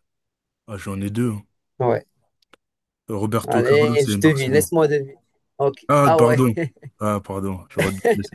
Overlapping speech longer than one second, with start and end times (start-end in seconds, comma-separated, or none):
3.4-4.7